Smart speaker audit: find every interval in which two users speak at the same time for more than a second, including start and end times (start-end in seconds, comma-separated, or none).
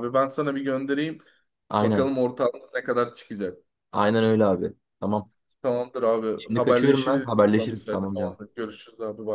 6.4-8.4